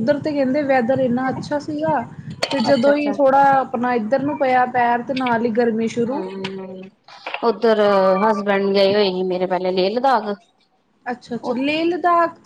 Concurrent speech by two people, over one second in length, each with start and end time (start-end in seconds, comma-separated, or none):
none